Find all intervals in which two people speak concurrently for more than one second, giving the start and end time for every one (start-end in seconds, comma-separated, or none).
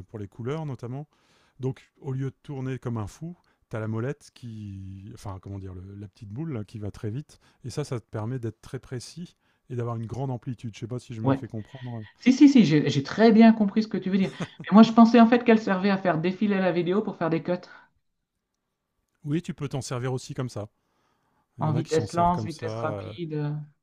21.6-23.1